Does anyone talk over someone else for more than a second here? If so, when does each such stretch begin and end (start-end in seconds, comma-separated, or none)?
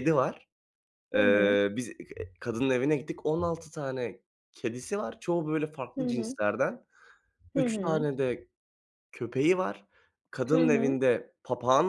none